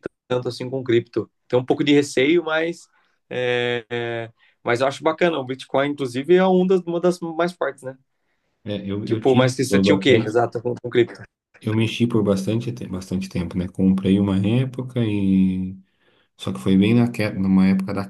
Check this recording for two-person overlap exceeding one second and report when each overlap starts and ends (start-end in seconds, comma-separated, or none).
9.0-10.3